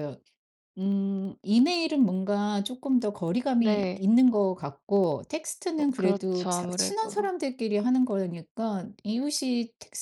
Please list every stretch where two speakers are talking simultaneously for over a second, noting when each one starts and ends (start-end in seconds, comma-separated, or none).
5.8-7.3